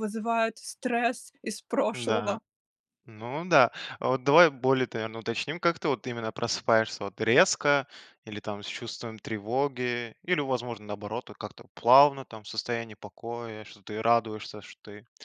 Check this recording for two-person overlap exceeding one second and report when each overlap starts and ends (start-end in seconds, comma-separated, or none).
none